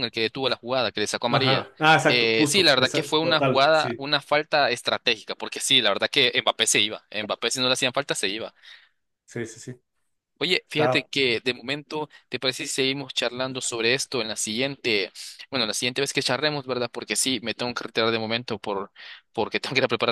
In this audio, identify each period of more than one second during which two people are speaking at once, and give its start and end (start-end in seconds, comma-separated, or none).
1.3-4.1